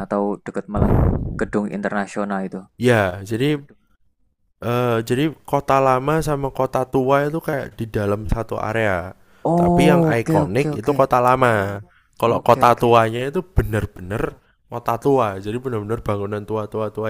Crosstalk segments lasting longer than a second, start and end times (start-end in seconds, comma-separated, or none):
9.5-11.0